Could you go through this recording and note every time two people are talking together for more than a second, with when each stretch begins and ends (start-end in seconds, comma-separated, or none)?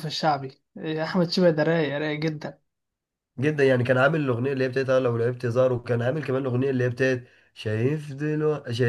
none